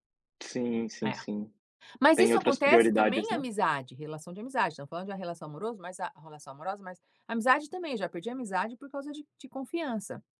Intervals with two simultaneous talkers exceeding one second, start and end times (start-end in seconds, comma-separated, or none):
2.1-3.5